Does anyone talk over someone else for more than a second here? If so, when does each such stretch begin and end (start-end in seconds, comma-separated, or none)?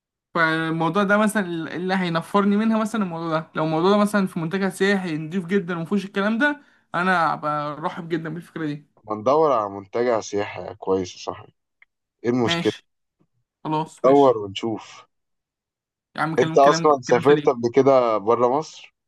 16.4-17.7